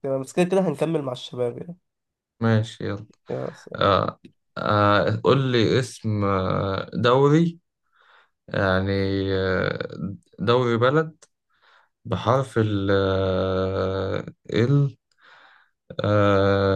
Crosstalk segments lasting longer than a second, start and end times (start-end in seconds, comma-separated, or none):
none